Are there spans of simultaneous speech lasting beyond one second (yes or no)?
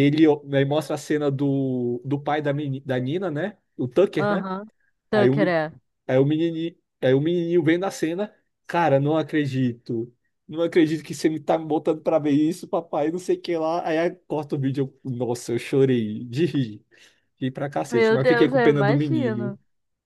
yes